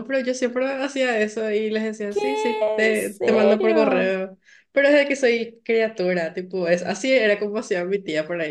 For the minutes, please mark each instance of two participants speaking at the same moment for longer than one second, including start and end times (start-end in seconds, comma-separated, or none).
2.1-4.1